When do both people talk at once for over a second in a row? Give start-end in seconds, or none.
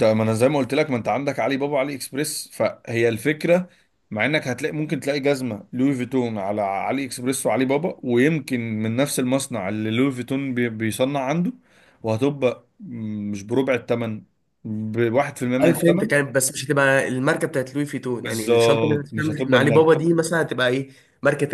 18.2-20.0